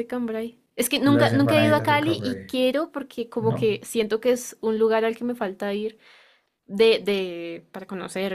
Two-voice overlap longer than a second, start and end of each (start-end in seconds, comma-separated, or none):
1.1-2.6